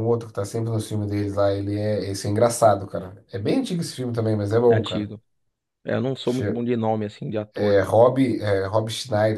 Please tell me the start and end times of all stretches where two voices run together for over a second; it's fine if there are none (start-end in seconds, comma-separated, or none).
none